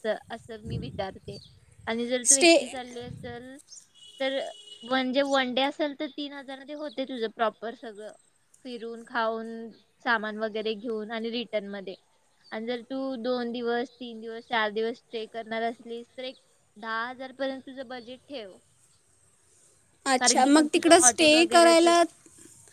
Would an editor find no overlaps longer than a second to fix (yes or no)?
no